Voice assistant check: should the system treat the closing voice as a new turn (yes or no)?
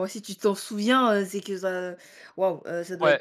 yes